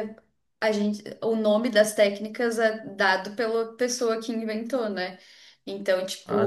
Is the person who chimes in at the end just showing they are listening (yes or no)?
yes